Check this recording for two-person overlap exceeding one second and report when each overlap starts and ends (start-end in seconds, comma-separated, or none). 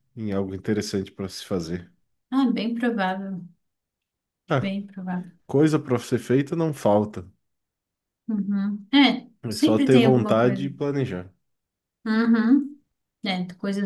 9.4-10.7